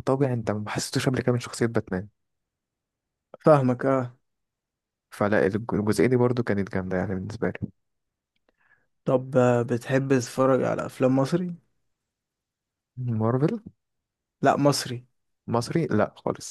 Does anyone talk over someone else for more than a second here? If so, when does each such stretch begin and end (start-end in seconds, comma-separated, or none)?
none